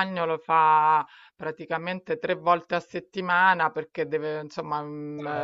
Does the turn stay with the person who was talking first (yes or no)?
yes